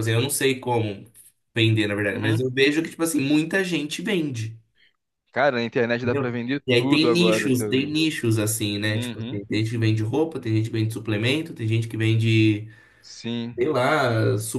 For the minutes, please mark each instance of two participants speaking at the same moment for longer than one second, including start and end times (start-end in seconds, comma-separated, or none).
6.0-7.9